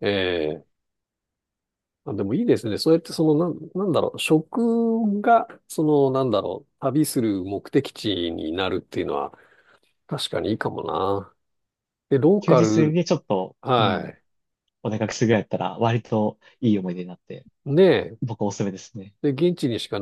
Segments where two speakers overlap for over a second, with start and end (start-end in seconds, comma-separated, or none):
none